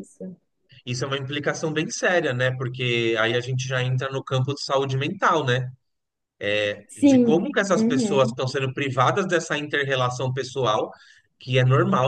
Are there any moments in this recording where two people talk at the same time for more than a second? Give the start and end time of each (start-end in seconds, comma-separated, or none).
7.0-8.3